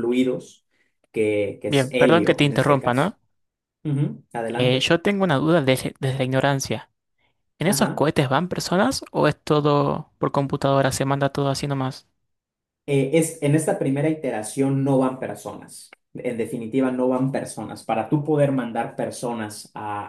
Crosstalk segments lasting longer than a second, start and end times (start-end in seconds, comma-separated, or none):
1.6-3.1